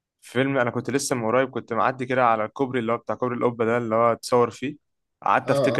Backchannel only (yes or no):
yes